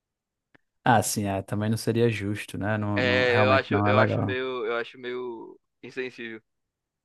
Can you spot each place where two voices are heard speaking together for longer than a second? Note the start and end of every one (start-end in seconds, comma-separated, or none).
3.0-4.4